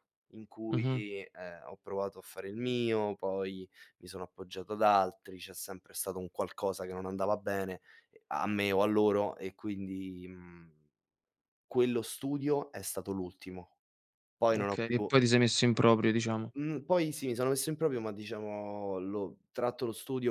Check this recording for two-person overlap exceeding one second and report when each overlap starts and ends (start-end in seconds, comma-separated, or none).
none